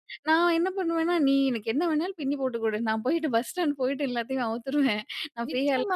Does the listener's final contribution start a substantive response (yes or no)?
yes